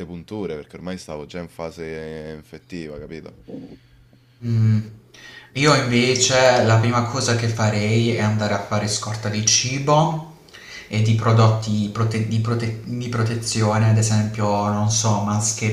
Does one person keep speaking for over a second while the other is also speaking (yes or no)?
no